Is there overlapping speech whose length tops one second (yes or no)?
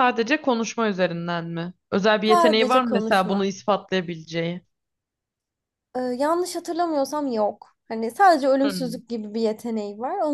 yes